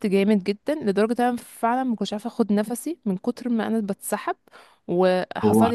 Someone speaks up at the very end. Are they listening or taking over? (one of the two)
listening